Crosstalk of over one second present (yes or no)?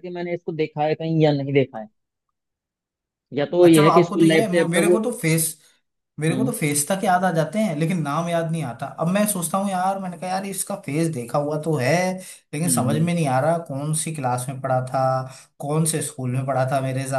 yes